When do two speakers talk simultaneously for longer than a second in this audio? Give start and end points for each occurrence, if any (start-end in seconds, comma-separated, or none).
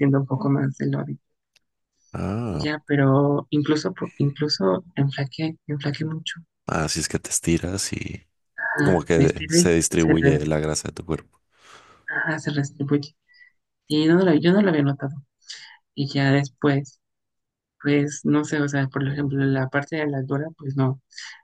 8.8-10.4